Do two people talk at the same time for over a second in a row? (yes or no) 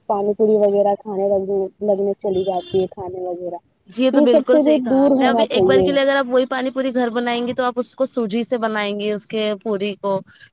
yes